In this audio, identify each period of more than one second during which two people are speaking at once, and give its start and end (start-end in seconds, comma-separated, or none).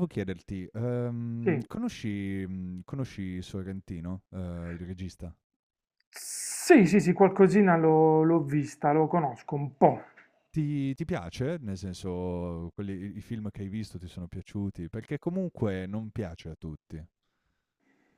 none